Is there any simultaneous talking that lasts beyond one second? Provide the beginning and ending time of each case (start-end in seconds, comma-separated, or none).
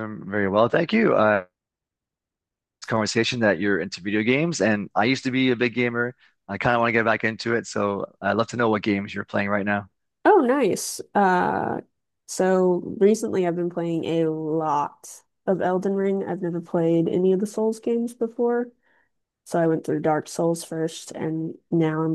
none